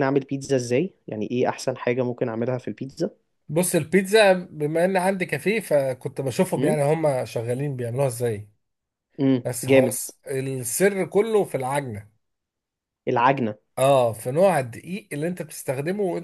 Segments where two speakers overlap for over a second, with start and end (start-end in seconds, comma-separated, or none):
none